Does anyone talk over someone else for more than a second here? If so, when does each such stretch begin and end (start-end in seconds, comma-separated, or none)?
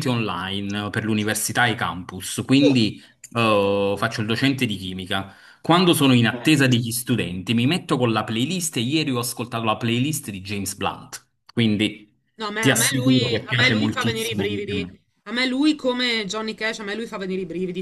12.6-14.8